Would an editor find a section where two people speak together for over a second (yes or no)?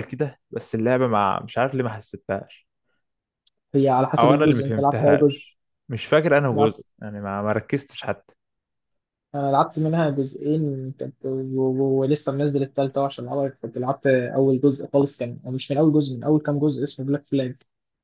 yes